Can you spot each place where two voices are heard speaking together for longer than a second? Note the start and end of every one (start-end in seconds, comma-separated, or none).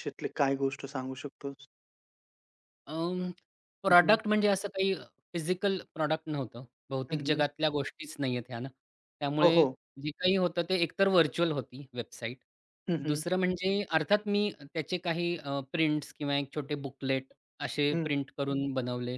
none